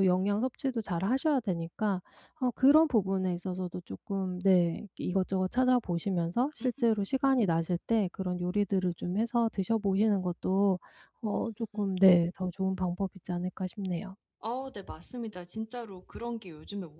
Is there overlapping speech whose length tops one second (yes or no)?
no